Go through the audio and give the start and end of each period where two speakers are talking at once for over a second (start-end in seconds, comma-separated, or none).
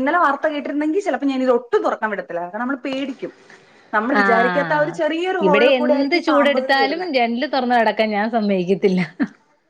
5.5-7.1